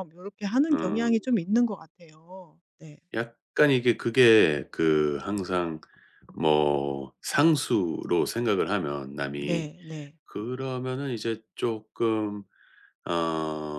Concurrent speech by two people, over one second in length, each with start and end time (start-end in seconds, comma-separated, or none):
none